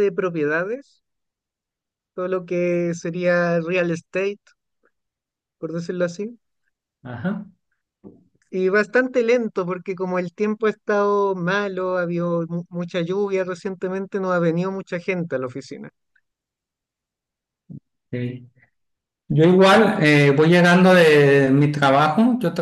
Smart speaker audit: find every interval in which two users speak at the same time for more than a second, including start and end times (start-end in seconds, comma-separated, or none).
none